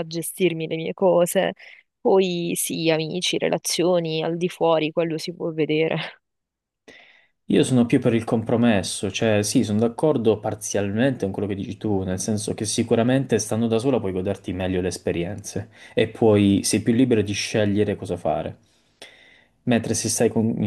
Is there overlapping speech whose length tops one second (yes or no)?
no